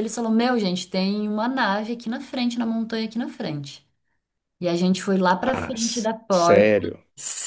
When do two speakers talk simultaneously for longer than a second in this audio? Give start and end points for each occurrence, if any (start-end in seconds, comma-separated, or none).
5.4-6.7